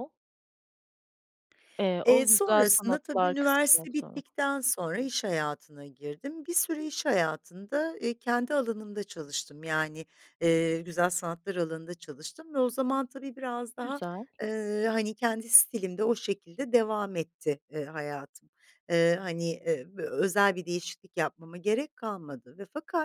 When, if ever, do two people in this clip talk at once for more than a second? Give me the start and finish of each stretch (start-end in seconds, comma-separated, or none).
2.0-4.2